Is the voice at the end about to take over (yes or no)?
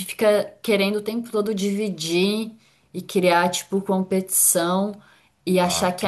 no